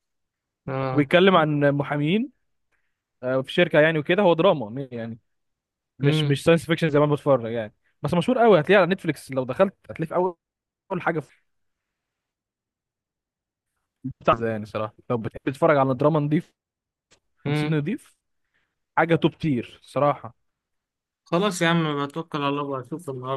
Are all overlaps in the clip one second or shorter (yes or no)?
yes